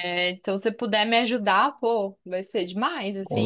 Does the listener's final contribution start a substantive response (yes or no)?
yes